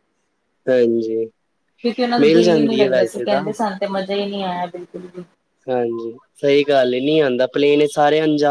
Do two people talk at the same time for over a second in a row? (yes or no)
yes